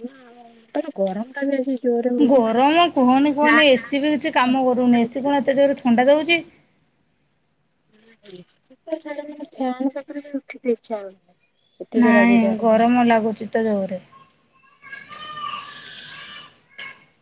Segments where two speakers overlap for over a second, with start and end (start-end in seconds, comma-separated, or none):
none